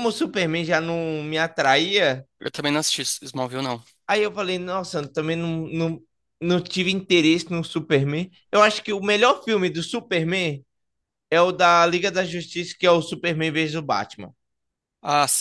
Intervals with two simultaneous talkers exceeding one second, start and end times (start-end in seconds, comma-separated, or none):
none